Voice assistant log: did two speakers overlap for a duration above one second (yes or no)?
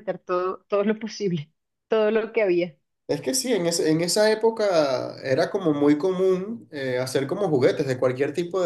no